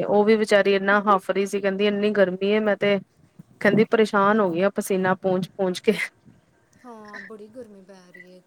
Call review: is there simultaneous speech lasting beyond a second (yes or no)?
no